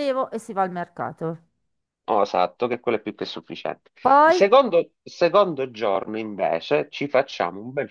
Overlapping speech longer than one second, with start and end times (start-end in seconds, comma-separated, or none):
none